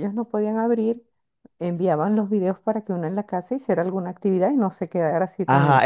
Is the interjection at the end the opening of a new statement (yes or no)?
yes